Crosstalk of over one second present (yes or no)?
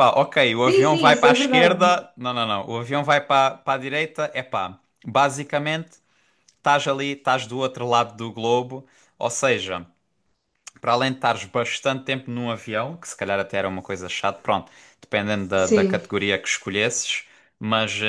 yes